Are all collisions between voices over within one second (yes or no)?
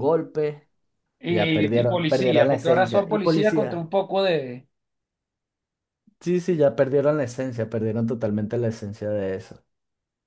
no